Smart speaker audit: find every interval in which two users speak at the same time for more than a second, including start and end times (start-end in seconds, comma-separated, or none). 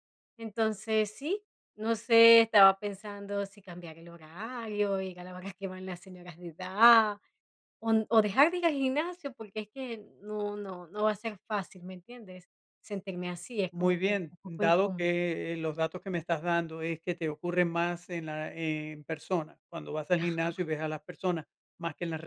13.7-15.1